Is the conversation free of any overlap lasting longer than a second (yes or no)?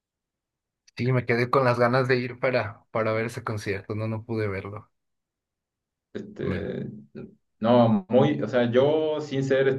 yes